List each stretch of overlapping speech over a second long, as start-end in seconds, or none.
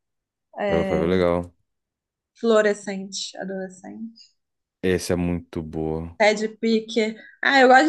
none